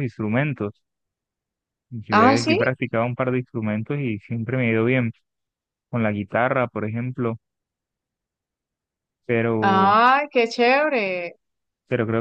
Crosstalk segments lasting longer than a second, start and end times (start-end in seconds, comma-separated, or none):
none